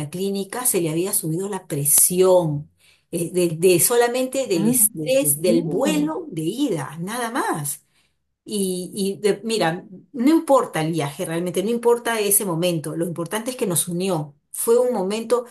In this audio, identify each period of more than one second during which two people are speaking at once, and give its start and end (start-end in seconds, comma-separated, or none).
4.5-6.1